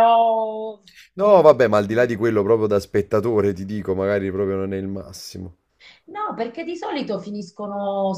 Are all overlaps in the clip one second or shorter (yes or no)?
yes